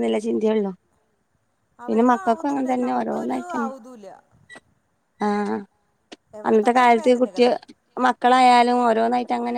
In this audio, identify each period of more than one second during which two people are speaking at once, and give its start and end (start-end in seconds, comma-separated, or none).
none